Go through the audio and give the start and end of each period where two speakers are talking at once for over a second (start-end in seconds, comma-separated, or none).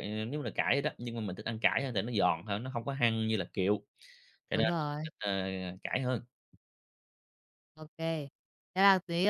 none